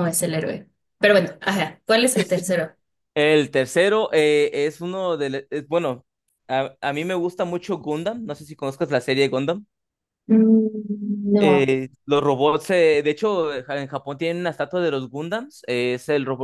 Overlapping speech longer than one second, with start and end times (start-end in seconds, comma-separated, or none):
none